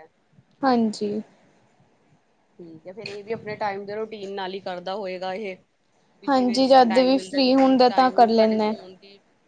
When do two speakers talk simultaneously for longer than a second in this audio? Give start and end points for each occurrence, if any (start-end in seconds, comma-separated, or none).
6.3-8.7